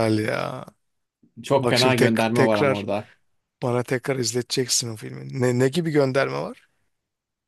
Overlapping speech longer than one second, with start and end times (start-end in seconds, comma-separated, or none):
1.6-2.8